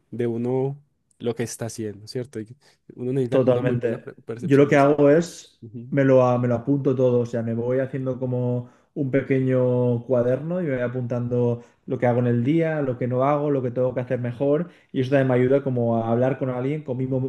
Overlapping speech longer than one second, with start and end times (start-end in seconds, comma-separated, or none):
3.3-5.0